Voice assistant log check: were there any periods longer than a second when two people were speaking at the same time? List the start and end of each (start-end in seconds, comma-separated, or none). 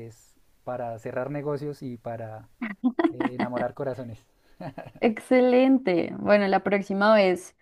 none